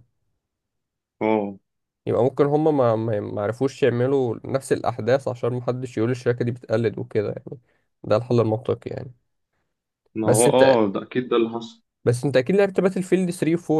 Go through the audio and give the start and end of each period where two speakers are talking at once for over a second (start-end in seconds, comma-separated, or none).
none